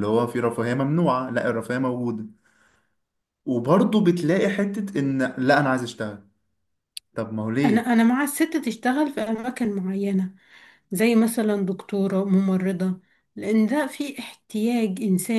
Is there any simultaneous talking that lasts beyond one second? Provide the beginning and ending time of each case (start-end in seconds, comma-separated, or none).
none